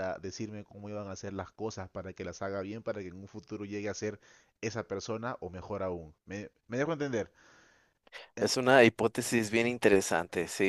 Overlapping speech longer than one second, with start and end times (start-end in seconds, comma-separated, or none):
none